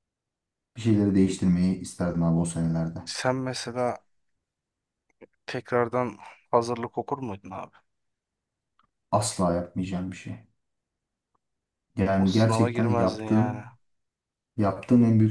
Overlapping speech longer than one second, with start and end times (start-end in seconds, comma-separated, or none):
12.2-13.6